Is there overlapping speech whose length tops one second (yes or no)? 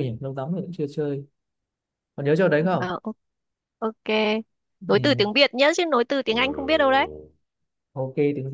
no